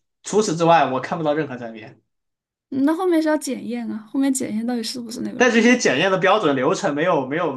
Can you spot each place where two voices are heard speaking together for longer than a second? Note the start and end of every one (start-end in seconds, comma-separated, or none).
none